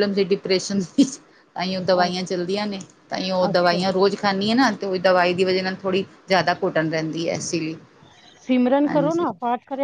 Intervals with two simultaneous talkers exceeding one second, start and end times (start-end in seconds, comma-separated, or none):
none